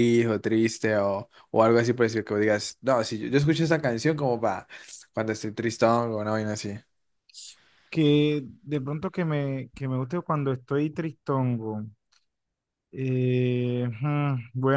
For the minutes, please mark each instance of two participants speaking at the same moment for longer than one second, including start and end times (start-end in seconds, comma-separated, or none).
none